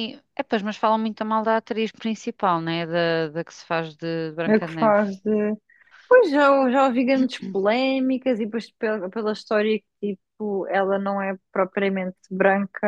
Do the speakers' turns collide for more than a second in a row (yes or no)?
no